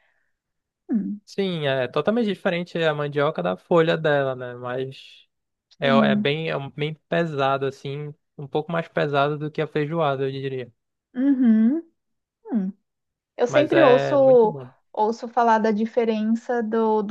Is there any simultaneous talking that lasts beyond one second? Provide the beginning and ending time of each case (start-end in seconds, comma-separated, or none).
13.5-14.7